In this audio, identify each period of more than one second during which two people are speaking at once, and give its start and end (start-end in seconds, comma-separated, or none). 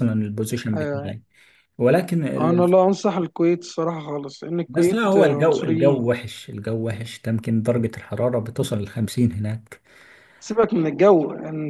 4.7-6.0